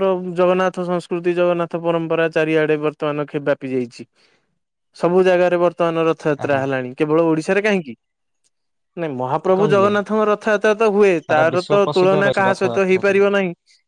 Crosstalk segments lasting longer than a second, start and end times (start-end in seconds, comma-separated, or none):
11.3-13.2